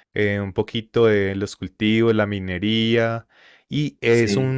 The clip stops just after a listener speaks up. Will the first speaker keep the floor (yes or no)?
yes